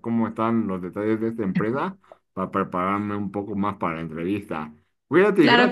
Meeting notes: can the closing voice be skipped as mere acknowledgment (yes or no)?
no